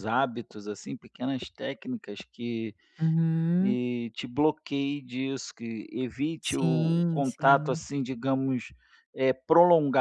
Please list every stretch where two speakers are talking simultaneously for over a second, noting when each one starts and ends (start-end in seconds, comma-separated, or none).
6.4-7.8